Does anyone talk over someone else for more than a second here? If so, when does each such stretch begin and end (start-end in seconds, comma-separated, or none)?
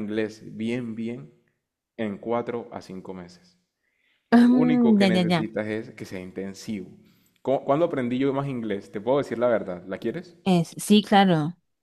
4.3-5.5